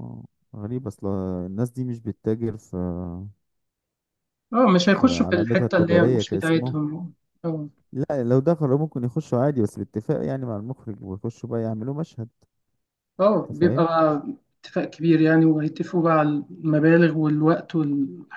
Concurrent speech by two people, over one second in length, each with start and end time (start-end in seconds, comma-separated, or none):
4.8-6.7